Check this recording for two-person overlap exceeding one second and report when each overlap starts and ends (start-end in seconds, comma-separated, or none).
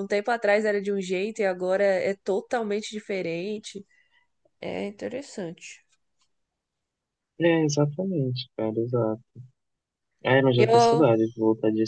none